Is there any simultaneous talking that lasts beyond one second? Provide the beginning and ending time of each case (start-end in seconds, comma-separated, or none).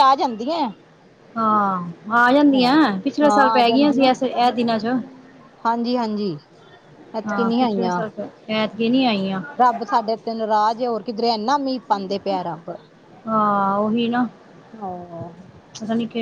none